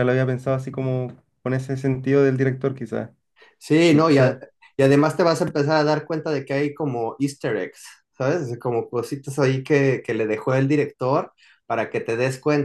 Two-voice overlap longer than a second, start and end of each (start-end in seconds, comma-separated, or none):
none